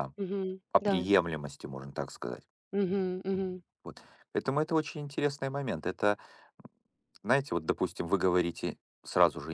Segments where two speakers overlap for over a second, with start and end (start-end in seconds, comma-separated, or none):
none